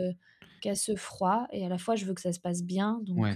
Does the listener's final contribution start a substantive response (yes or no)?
yes